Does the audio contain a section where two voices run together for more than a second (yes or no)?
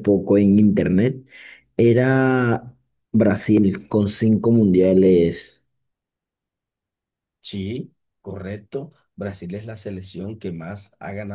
no